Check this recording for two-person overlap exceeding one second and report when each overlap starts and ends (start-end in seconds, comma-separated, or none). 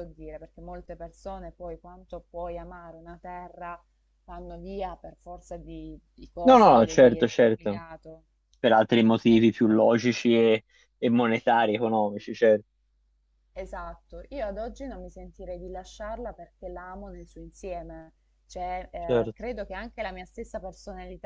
6.4-7.8